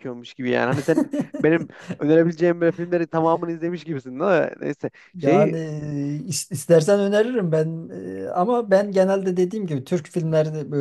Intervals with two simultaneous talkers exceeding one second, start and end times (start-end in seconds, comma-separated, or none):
none